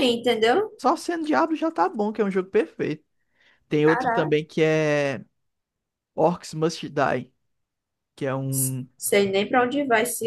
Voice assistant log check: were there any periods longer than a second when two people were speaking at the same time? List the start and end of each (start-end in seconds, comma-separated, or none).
none